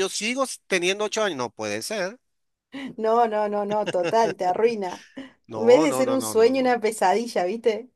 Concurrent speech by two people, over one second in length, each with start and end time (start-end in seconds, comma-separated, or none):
5.5-6.8